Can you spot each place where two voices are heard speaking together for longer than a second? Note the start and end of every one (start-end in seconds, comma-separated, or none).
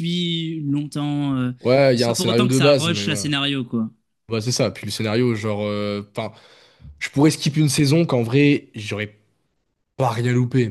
1.9-3.3